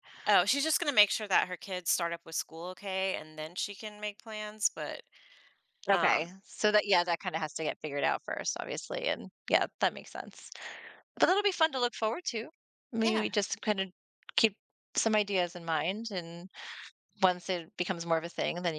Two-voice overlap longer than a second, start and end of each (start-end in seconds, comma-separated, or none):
none